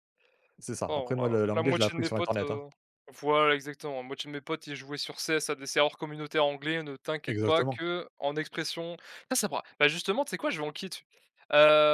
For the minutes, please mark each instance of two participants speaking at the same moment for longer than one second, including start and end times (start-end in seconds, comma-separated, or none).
0.9-2.6